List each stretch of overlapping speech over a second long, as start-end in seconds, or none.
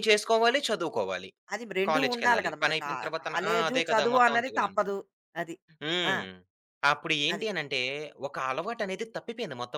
1.9-4.8